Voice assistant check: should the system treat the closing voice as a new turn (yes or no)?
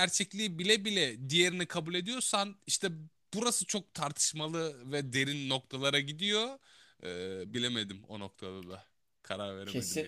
yes